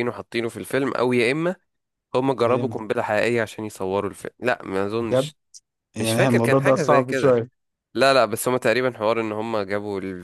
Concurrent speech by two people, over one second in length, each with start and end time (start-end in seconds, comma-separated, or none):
6.0-7.4